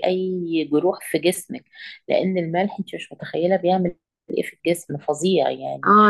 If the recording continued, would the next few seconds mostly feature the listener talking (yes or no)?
yes